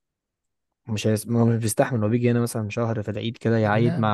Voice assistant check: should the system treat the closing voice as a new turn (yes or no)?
no